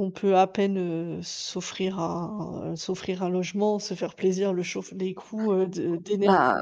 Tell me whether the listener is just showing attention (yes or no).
no